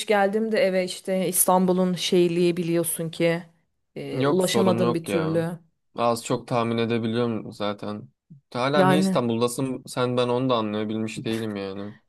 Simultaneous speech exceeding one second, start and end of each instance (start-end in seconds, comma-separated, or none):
4.2-5.4